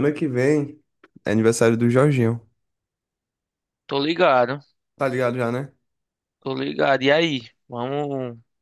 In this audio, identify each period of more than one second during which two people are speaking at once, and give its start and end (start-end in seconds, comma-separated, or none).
none